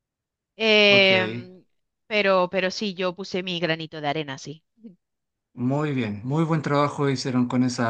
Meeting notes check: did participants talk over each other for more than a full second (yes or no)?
no